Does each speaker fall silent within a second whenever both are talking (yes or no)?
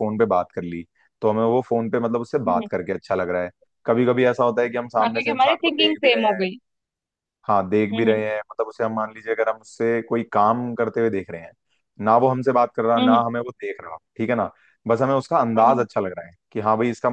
no